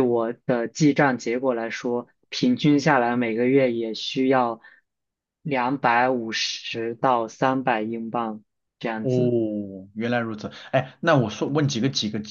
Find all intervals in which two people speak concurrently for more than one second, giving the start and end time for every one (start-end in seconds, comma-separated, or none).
none